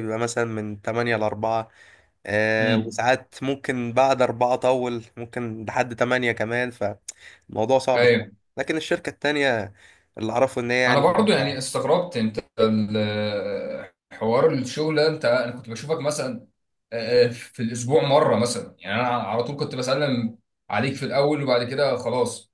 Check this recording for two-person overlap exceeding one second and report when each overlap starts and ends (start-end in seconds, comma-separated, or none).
none